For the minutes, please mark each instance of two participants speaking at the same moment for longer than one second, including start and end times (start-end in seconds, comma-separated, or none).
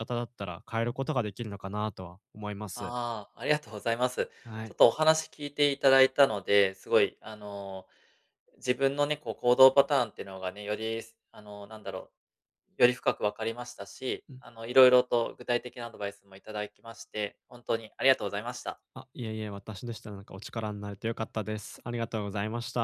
none